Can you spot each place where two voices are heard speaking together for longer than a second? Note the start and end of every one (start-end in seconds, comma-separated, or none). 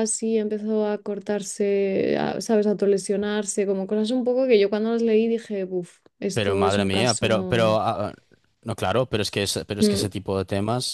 6.3-7.8